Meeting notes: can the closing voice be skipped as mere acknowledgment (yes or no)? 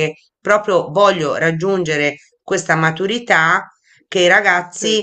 yes